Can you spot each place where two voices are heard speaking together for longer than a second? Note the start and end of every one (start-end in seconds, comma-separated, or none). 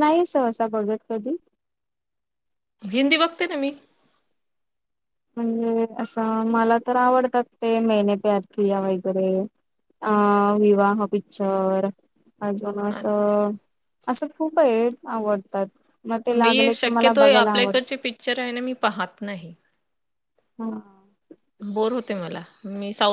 16.4-17.8